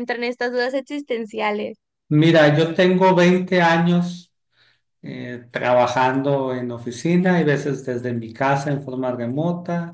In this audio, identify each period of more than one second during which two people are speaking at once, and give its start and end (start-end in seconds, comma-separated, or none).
none